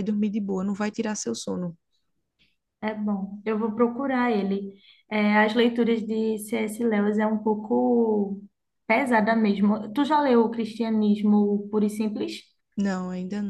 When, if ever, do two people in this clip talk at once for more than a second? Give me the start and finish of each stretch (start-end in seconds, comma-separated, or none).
none